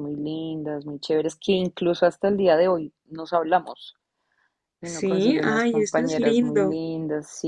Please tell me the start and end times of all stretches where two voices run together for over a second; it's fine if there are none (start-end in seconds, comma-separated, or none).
4.8-6.8